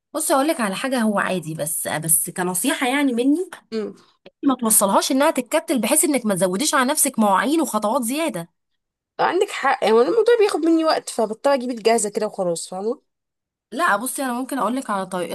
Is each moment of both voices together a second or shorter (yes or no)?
yes